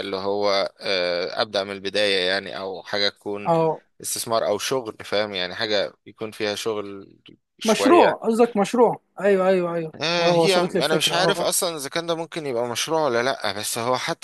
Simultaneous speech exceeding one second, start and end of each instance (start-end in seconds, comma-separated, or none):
10.0-11.5